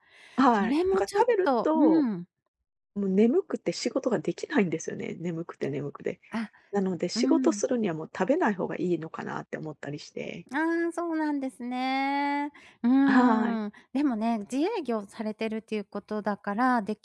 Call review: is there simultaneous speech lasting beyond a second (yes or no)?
yes